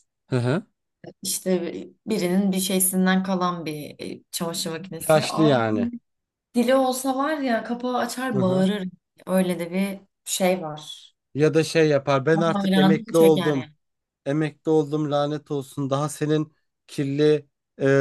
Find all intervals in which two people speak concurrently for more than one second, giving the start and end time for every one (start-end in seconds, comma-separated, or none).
12.3-13.7